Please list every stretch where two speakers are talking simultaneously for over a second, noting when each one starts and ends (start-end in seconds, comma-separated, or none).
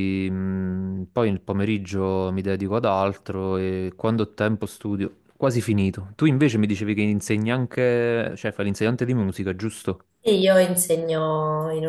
none